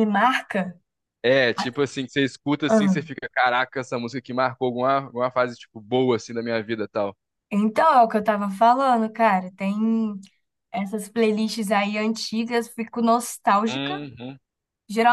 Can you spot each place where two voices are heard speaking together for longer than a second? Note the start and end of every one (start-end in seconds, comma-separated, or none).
none